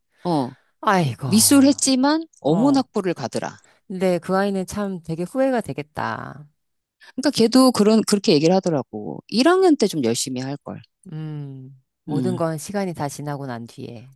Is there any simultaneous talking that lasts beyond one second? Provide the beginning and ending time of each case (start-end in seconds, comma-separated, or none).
none